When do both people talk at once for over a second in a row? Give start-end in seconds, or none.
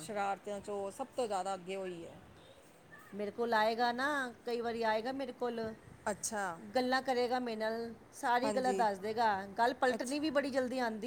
none